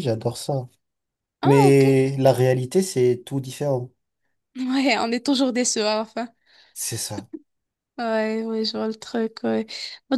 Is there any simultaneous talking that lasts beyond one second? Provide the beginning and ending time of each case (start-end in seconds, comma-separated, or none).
none